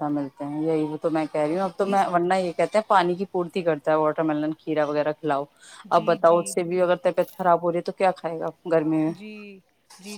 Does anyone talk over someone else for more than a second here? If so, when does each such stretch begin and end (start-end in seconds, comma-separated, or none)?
none